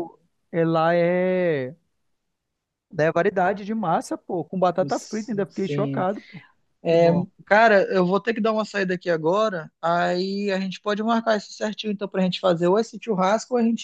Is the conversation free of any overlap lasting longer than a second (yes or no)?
no